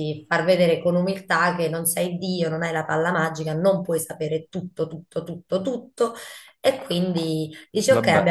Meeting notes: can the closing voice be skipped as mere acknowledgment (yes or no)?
yes